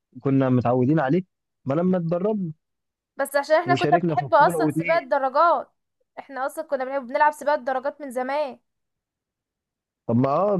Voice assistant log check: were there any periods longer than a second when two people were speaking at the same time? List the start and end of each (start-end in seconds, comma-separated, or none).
3.7-5.0